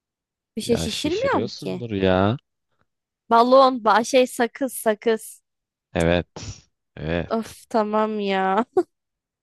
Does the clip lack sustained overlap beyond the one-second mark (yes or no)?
no